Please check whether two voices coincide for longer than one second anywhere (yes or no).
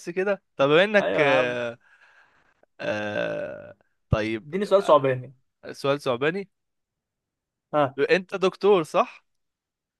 no